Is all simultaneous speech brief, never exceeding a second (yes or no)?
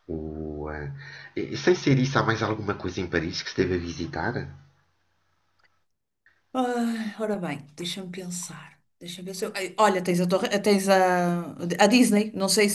yes